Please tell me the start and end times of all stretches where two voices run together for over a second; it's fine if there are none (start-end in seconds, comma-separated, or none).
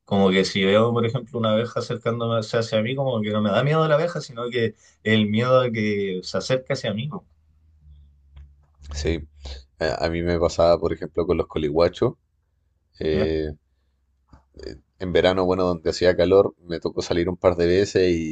none